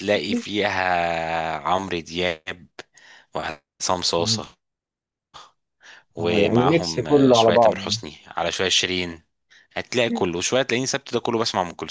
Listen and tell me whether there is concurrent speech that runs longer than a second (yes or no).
yes